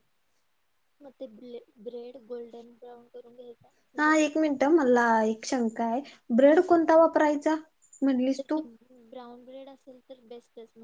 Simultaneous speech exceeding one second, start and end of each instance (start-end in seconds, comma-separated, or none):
none